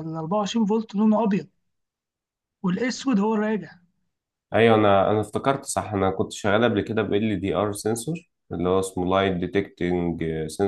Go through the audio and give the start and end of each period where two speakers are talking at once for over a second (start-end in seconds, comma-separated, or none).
none